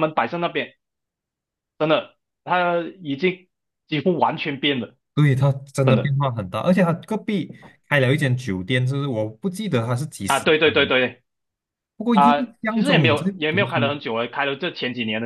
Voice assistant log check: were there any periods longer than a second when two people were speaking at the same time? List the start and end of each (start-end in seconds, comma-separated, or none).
12.1-13.9